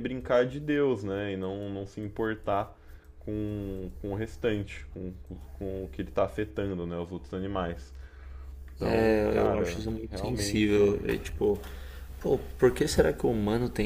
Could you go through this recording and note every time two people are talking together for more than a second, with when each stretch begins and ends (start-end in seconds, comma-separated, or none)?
8.9-10.9